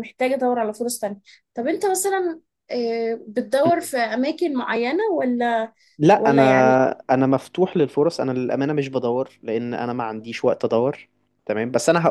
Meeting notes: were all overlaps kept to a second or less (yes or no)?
yes